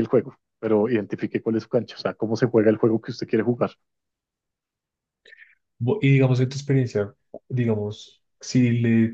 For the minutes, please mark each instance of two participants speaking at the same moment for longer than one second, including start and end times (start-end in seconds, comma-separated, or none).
none